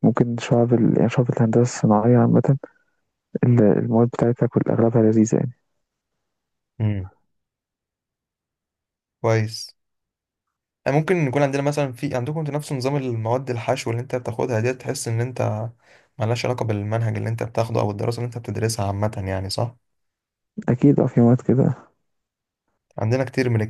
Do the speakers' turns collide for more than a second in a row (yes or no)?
no